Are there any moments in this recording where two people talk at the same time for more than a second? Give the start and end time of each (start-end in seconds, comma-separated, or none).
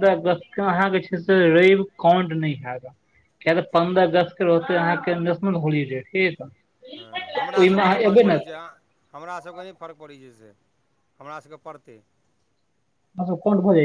7.0-8.6